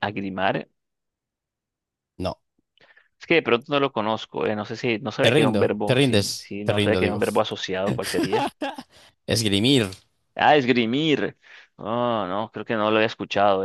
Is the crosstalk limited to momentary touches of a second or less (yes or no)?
no